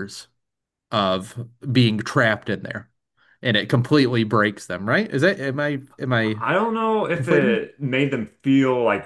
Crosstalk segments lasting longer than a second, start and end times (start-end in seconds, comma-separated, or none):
none